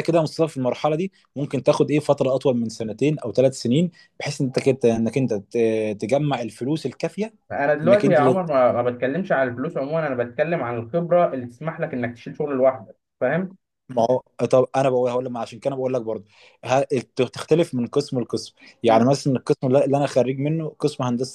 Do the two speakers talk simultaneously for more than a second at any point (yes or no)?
no